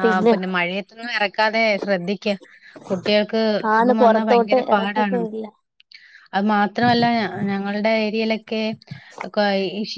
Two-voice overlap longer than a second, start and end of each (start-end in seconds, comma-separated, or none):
3.7-5.2